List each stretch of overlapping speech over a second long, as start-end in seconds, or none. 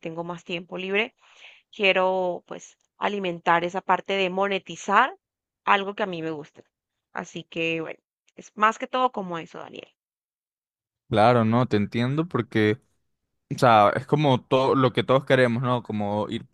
none